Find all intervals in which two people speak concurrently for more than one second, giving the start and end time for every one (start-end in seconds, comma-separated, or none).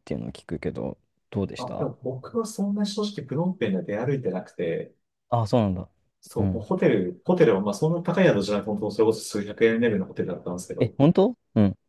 none